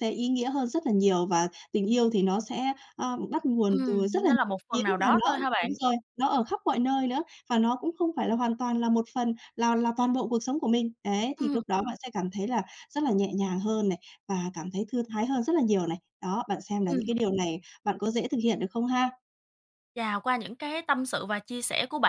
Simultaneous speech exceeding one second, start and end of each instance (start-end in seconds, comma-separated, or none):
3.7-5.7